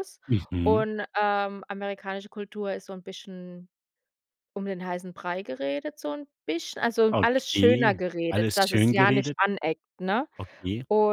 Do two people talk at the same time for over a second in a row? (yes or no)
yes